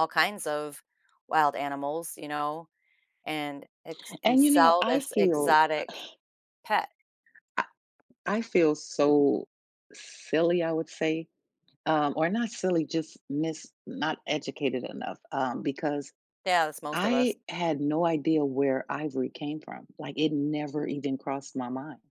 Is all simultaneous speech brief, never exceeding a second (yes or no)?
no